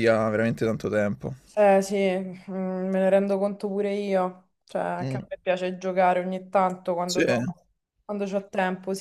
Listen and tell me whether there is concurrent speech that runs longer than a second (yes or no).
no